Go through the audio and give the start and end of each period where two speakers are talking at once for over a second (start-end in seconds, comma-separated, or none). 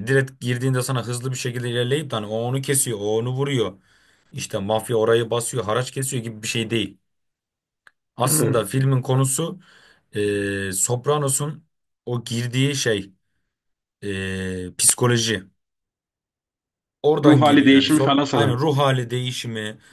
17.2-18.6